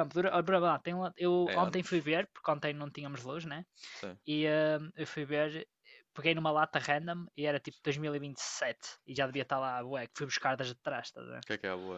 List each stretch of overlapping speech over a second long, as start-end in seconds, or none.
none